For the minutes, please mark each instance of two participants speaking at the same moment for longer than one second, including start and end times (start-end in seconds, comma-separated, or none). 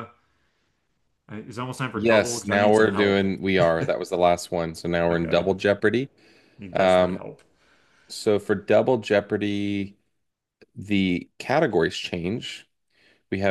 1.9-3.2